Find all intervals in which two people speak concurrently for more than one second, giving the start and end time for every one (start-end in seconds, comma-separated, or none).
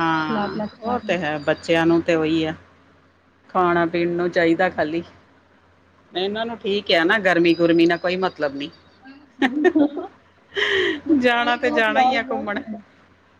11.2-12.5